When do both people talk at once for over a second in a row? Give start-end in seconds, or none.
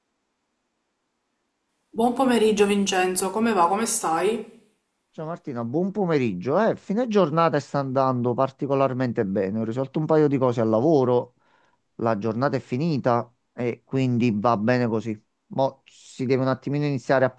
none